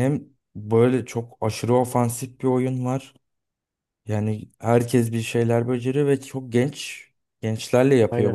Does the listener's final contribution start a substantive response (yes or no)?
no